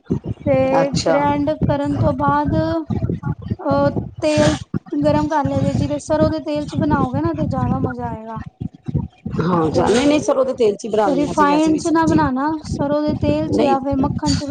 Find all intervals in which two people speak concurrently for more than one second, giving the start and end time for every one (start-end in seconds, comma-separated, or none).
9.7-12.2